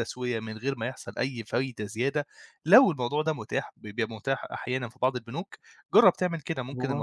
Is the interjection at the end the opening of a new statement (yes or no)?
no